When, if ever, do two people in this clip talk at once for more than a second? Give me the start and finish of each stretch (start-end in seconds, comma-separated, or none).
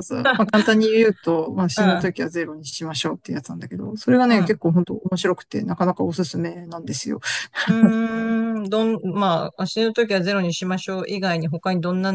none